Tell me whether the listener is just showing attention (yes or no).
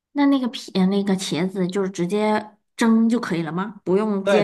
no